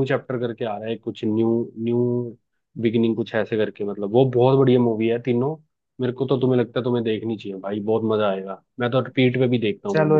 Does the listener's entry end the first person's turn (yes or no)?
yes